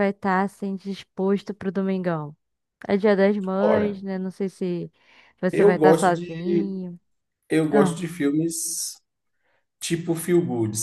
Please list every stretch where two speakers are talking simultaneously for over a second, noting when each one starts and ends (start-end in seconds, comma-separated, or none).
5.5-6.8